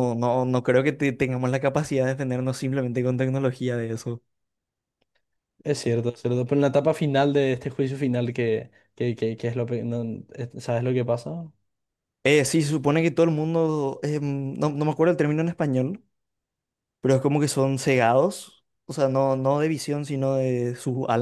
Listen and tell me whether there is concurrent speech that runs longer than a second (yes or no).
no